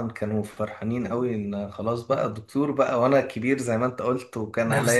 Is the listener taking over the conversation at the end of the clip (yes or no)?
no